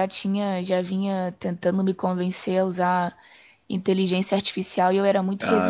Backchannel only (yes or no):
no